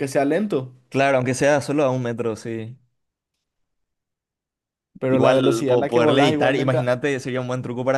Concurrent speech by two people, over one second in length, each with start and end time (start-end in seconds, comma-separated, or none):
5.1-7.0